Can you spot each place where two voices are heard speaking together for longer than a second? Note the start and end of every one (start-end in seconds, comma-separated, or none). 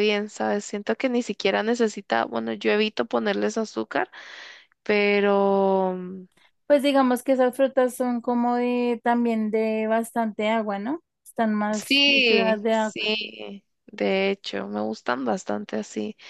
11.7-13.0